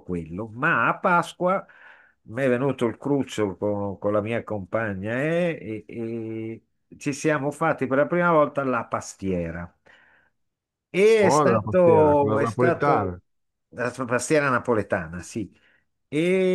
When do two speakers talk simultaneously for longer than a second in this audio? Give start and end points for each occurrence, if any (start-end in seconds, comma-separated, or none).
11.2-13.2